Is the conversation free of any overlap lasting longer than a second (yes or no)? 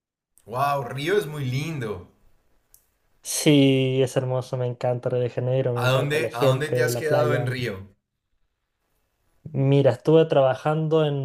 no